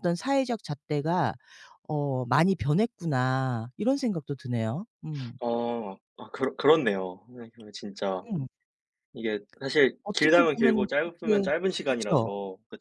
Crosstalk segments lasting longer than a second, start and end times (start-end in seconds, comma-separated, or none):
10.0-12.3